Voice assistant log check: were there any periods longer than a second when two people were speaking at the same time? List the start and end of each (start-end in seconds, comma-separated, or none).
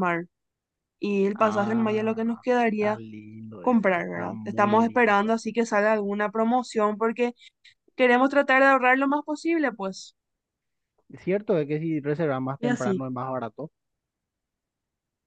1.3-3.0, 3.6-5.3